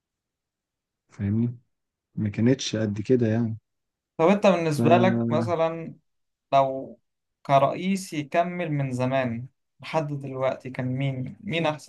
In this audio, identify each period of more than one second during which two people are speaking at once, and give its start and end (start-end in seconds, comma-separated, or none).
none